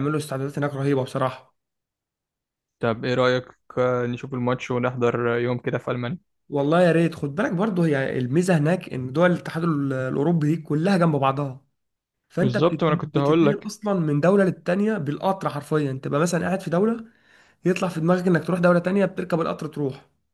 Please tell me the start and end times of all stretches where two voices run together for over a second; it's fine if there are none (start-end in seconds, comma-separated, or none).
12.4-13.7